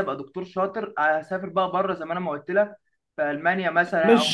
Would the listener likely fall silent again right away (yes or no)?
no